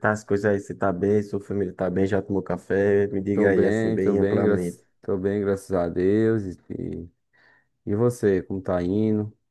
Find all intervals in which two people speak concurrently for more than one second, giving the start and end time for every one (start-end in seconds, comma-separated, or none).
3.3-4.8